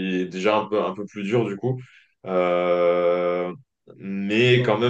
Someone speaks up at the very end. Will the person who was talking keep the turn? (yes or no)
yes